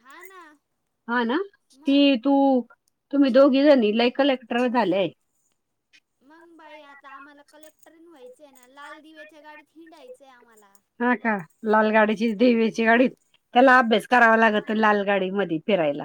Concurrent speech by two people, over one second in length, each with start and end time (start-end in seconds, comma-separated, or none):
none